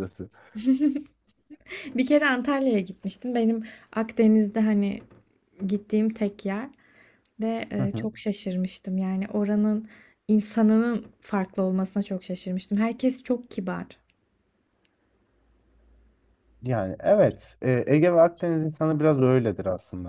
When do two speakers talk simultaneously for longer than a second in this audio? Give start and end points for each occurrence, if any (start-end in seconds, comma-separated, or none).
none